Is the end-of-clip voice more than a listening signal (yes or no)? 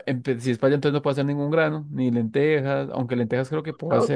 yes